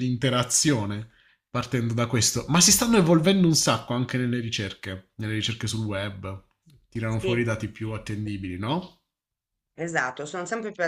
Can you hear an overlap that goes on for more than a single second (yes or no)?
no